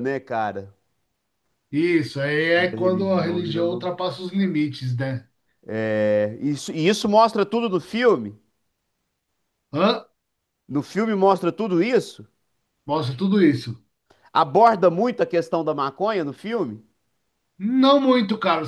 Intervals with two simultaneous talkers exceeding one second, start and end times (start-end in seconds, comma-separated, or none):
2.5-3.9